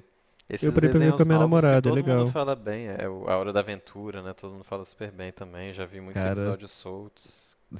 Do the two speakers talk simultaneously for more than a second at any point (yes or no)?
yes